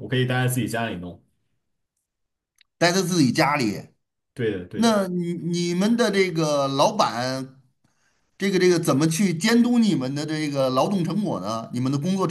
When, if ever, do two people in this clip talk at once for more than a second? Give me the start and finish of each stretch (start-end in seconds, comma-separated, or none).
none